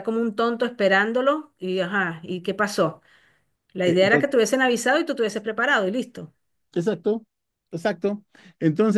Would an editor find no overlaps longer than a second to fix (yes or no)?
yes